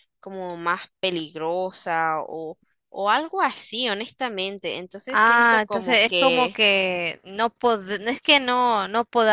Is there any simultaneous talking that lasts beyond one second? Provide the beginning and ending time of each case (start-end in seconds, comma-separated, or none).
5.1-6.6